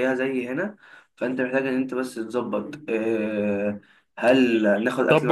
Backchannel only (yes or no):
no